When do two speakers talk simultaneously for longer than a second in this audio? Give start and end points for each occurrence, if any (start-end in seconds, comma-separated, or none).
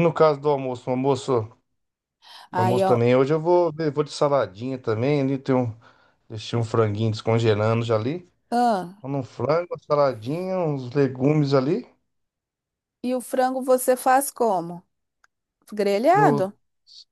none